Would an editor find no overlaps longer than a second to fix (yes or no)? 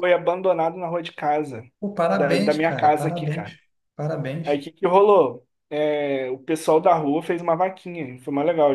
no